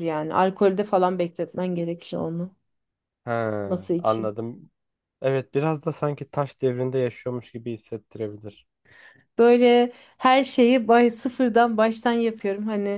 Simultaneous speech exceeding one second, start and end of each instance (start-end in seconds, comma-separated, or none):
none